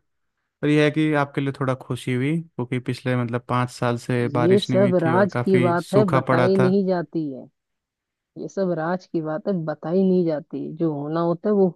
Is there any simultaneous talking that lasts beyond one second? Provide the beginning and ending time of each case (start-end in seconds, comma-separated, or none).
4.4-6.7